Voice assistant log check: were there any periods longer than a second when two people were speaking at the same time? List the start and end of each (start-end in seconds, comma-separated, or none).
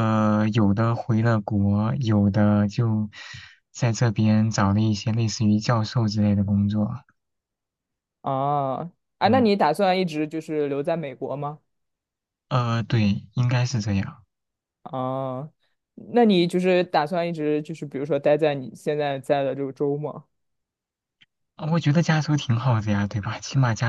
none